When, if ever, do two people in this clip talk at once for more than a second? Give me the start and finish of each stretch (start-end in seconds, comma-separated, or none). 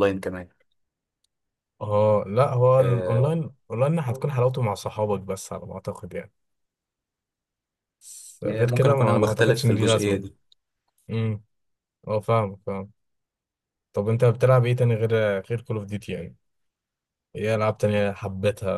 8.4-10.2